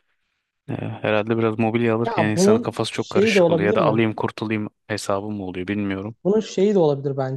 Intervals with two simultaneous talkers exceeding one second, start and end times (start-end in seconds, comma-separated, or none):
2.0-4.1